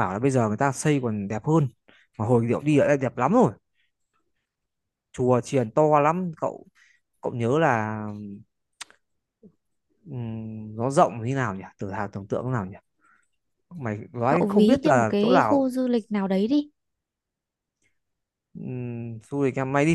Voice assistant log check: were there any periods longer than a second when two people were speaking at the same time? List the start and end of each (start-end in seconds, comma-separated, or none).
14.3-15.7